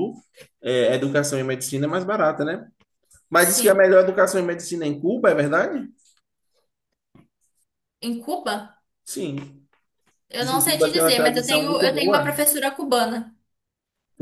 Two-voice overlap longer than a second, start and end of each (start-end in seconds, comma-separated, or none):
10.4-12.4